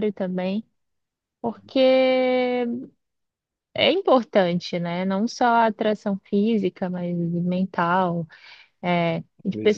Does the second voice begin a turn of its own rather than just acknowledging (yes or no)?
no